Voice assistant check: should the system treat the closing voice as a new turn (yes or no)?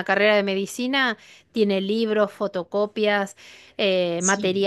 no